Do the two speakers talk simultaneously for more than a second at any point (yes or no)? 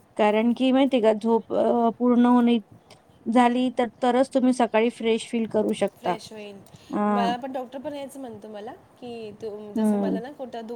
no